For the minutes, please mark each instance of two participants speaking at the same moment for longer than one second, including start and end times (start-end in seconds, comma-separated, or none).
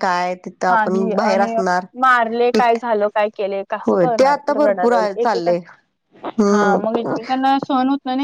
3.9-5.5